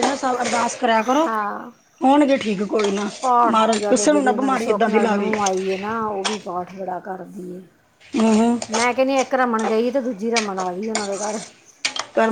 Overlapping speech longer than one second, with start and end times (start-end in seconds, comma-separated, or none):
3.5-5.3